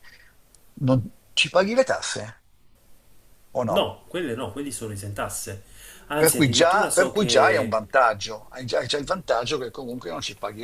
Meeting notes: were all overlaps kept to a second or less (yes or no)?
no